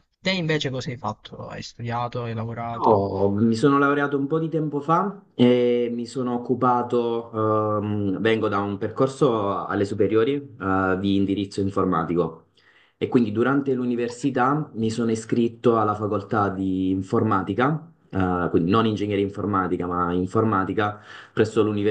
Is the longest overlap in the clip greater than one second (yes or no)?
no